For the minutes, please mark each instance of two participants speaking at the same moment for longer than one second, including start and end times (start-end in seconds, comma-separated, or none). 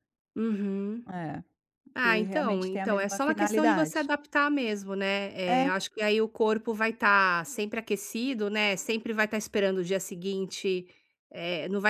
2.0-4.0